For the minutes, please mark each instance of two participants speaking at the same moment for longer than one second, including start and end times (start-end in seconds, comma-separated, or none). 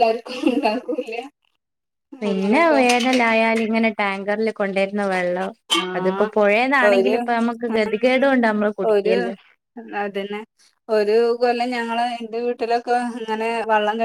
none